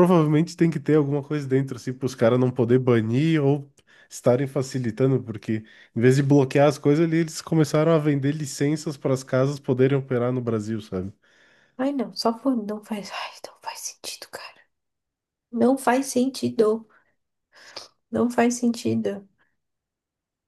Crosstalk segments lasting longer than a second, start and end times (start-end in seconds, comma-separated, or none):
none